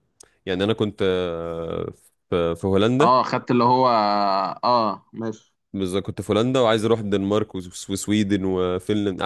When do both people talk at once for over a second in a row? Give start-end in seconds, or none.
none